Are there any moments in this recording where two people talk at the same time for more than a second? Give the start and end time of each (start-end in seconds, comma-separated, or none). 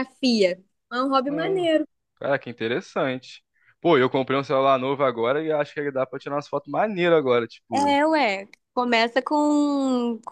none